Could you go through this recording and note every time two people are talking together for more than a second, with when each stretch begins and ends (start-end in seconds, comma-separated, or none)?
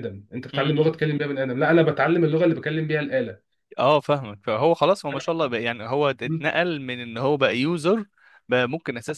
none